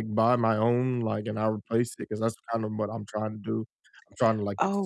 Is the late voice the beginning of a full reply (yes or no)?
no